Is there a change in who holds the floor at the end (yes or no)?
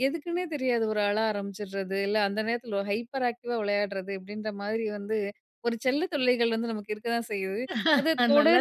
no